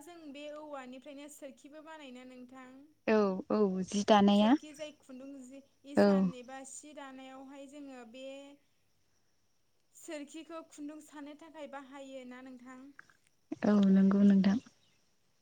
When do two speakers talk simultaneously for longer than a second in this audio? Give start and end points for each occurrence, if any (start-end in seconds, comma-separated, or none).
none